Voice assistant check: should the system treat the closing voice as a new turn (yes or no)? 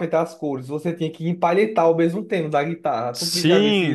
yes